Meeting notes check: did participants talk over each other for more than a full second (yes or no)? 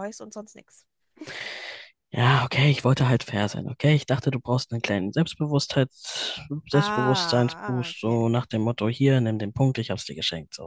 yes